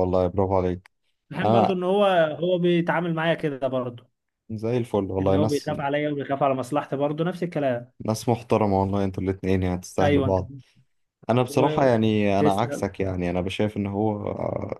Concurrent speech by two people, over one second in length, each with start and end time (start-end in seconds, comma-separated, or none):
11.5-12.8